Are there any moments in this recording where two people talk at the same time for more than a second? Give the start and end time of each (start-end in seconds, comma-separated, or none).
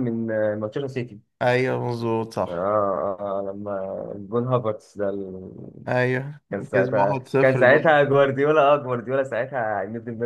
6.5-8.0